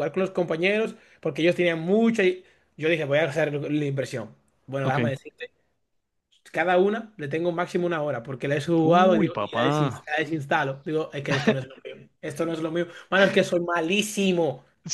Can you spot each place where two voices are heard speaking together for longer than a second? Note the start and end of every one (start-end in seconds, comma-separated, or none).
8.8-10.1